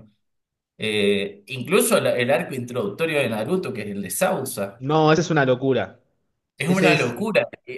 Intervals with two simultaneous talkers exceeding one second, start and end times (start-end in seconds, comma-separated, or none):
none